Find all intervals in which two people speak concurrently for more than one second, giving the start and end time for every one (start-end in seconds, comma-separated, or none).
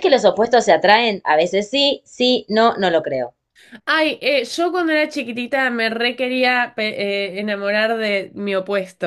none